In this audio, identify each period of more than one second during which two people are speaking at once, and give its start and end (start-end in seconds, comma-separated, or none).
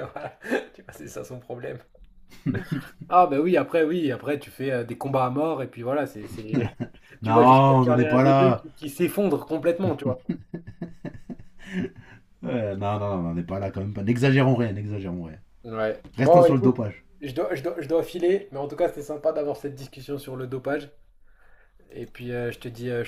7.2-8.7